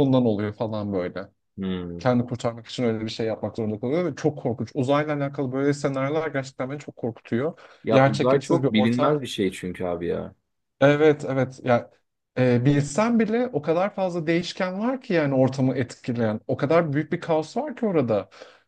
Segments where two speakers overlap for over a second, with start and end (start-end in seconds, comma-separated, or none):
7.8-9.2